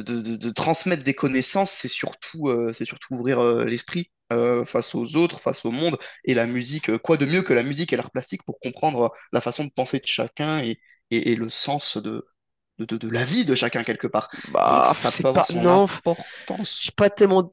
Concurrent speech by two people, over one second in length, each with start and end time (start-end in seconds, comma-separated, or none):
14.7-16.9